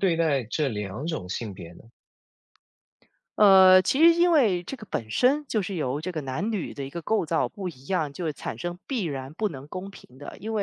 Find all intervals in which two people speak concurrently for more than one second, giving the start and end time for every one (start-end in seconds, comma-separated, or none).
none